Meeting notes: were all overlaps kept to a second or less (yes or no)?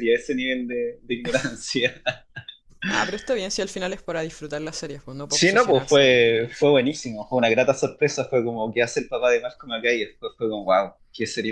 no